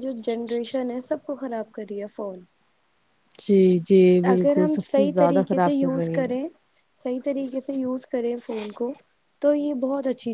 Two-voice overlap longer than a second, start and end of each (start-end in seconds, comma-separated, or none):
4.3-6.3